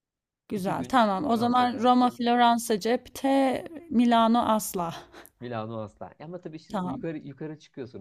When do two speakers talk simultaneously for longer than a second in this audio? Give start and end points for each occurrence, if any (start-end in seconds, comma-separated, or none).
0.6-1.9